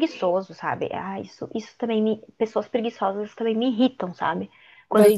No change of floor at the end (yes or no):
no